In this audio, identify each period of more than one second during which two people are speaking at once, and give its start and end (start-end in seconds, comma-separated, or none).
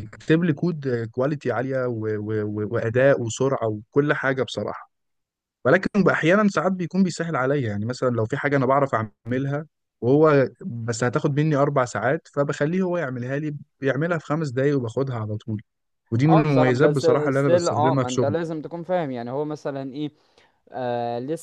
16.3-18.4